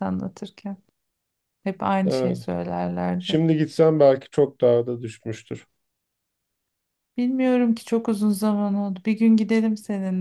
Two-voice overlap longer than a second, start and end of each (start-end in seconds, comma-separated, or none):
none